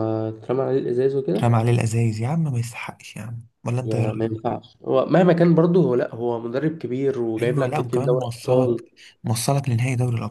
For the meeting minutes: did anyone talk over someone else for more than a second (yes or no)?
yes